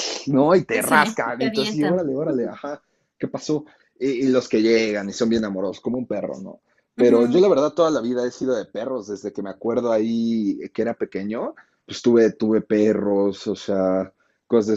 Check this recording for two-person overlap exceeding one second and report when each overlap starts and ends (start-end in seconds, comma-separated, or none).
0.8-2.1